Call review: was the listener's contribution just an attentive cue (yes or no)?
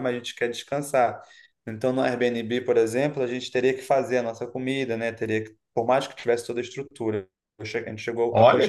no